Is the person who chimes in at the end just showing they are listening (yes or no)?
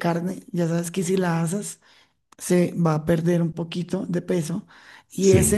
yes